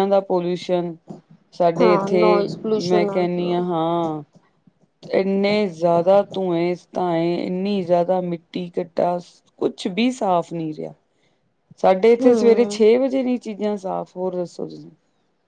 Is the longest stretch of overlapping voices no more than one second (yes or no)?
no